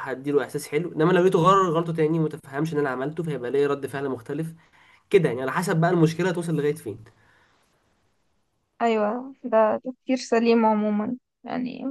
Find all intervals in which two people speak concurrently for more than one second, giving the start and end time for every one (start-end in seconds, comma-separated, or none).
none